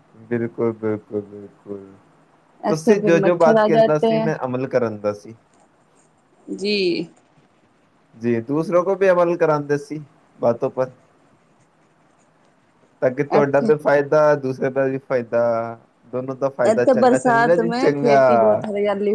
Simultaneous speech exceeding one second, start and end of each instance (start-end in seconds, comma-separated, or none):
16.7-18.2